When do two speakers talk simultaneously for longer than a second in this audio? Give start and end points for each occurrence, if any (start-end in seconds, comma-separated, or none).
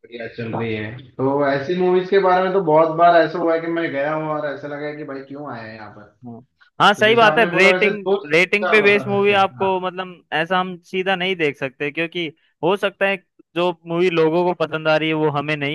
7.0-9.9